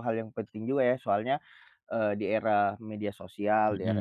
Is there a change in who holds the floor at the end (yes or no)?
no